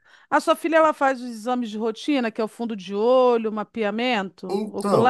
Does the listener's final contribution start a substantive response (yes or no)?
yes